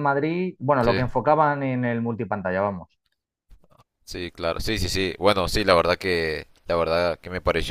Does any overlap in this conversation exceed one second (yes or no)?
no